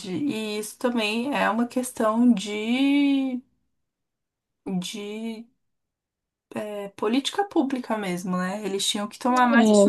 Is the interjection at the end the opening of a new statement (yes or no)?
no